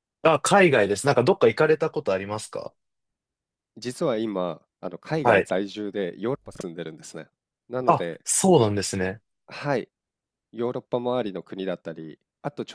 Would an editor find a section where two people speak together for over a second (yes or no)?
no